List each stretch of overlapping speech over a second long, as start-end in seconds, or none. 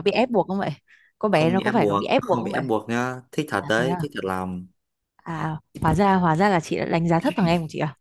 1.3-2.6